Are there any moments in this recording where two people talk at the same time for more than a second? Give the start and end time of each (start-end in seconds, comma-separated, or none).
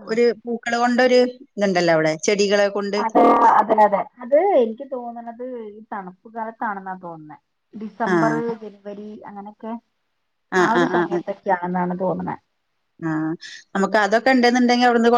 none